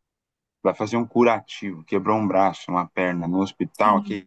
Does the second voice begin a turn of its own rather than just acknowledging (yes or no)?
no